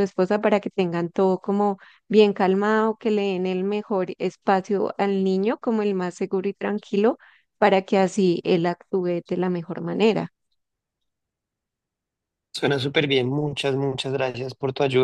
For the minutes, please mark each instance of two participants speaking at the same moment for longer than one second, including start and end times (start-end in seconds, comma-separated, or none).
none